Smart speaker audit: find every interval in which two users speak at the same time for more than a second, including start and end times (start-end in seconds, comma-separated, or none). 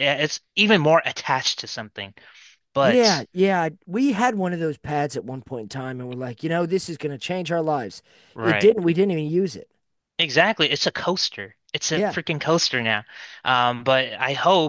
none